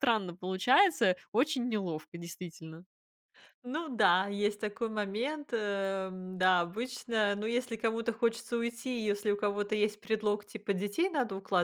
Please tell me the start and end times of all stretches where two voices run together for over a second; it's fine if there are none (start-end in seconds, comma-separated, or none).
none